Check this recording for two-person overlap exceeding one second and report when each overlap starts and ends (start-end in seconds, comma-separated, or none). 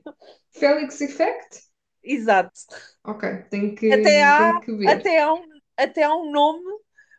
3.9-5.1